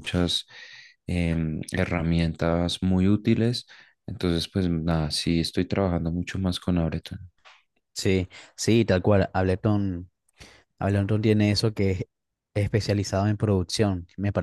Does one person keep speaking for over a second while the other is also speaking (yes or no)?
no